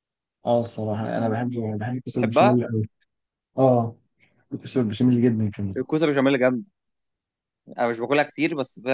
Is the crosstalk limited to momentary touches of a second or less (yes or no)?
yes